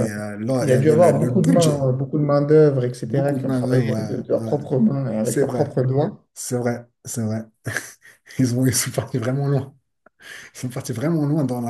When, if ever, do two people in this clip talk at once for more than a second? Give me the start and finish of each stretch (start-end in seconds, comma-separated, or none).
0.6-1.9, 3.0-4.5